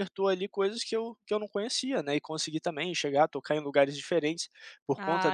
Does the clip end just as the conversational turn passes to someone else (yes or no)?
no